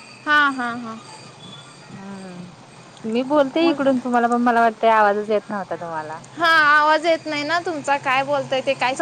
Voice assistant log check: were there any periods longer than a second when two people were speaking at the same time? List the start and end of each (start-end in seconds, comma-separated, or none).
none